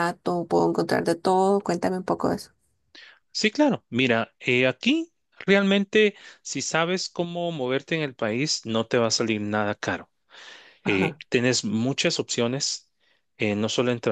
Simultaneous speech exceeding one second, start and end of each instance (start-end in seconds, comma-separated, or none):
none